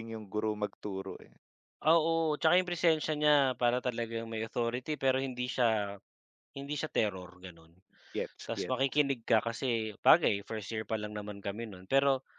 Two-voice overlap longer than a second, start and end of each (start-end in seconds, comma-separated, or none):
none